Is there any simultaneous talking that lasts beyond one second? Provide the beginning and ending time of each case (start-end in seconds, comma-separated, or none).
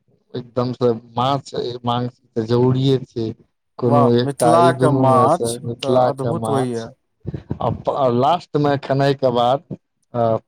3.9-6.8